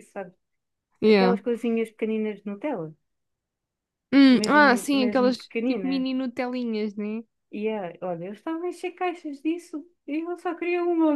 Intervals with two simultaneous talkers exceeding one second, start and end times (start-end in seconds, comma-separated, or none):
4.3-6.0